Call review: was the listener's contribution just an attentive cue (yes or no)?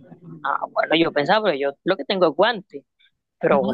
no